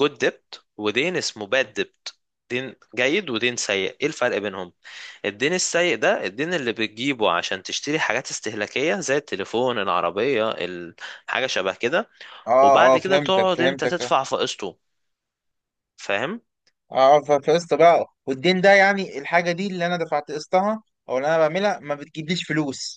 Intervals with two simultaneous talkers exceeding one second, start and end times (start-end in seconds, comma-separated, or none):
12.6-14.1